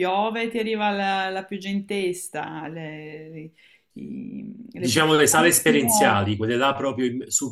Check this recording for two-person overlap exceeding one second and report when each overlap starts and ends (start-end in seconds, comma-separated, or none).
4.7-6.2